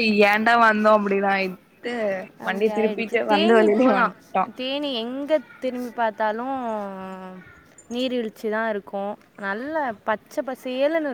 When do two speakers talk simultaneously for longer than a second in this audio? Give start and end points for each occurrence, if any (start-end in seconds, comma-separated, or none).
2.5-4.1